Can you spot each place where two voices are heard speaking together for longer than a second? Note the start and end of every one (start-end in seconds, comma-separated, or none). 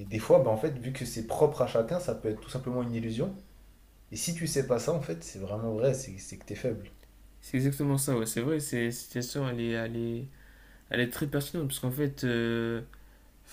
none